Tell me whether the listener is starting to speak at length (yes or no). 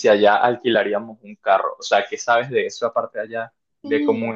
no